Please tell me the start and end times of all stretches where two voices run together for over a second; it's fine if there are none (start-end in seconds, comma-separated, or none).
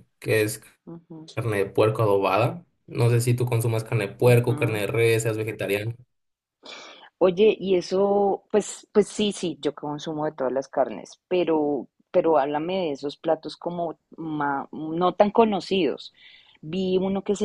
none